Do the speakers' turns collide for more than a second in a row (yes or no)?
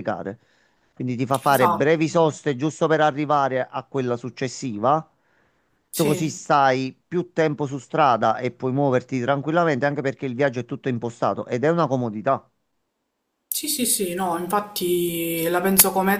no